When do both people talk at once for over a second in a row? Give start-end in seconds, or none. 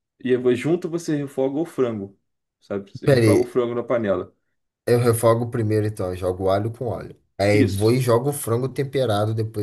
none